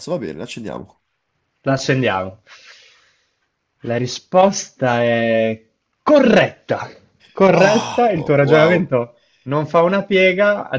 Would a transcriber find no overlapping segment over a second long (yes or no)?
no